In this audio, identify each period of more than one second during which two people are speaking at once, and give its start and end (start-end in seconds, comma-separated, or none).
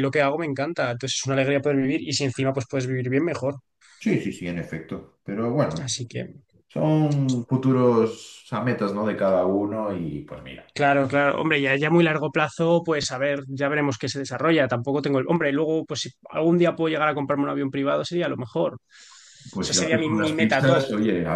19.5-20.9